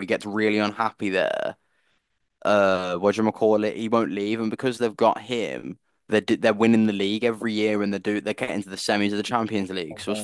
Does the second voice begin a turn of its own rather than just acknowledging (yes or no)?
no